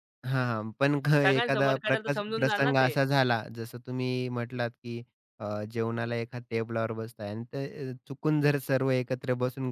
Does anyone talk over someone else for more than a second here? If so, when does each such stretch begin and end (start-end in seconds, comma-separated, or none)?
1.2-2.9